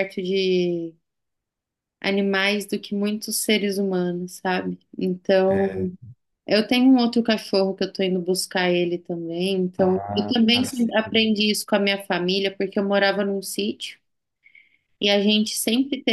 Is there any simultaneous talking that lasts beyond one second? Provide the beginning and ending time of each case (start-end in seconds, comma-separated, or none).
9.8-11.3